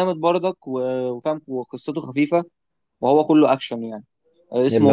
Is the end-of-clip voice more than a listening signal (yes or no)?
no